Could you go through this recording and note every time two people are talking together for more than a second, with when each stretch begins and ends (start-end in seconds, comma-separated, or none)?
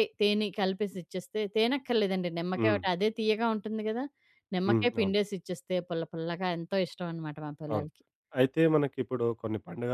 none